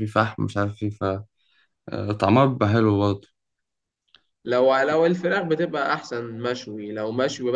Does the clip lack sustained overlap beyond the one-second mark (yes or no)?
yes